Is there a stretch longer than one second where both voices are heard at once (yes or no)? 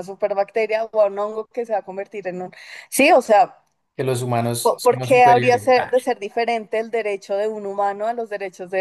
yes